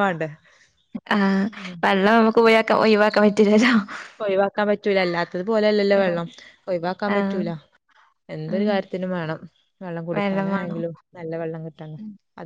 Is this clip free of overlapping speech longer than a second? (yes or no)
yes